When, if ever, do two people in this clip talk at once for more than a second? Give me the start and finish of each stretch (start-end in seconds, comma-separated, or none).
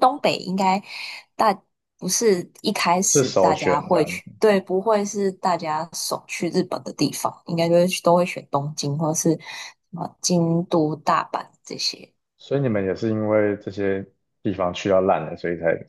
3.0-4.3